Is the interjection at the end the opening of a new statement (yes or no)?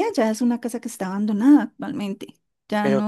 no